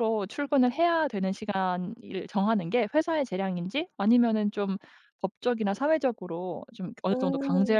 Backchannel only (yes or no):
yes